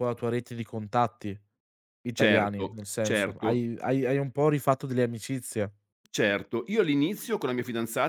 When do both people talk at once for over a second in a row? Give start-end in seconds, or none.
2.1-3.7